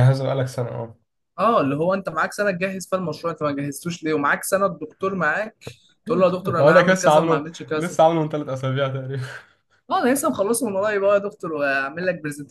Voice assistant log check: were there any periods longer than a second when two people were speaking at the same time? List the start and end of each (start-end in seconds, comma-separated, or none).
6.5-8.0